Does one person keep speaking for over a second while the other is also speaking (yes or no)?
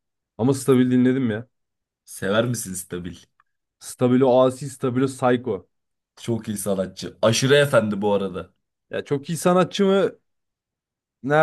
no